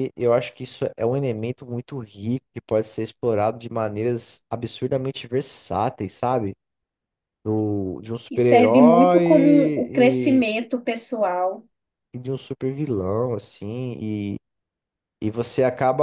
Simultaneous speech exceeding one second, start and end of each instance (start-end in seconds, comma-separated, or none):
8.3-10.4